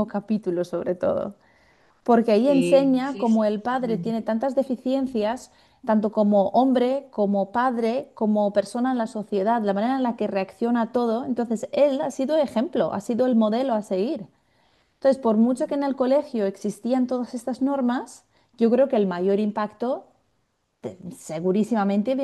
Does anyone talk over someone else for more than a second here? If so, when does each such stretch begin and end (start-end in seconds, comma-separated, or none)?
2.5-4.1